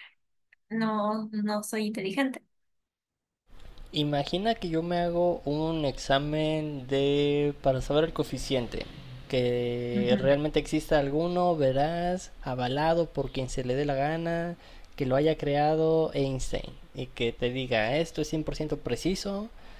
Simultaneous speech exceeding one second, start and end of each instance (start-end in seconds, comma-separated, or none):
none